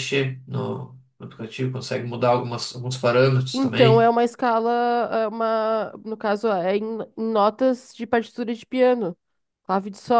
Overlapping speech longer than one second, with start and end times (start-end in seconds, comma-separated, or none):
none